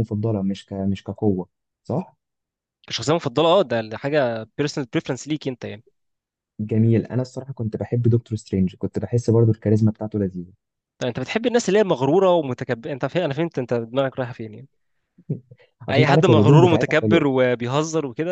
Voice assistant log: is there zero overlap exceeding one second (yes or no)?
no